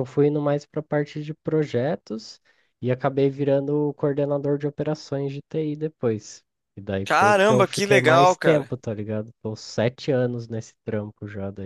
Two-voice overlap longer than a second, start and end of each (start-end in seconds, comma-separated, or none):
7.0-8.7